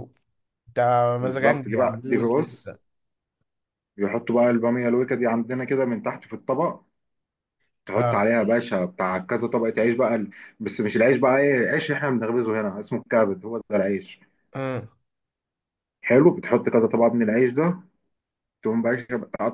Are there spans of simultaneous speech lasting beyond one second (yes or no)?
yes